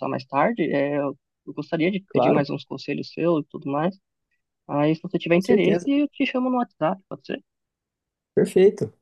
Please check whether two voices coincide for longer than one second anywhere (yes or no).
no